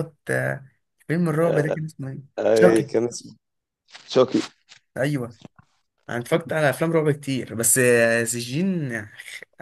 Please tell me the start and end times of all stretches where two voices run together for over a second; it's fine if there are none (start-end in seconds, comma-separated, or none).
none